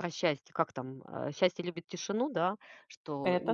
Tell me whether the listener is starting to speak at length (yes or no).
no